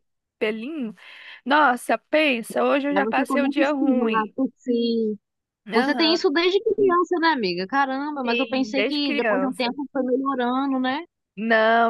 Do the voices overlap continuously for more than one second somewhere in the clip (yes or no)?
yes